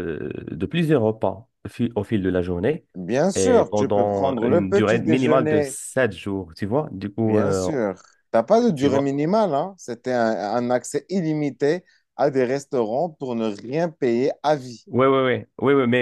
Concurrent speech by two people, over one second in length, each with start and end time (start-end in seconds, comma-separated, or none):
3.4-5.8